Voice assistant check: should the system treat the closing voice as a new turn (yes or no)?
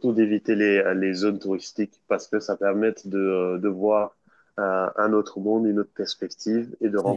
no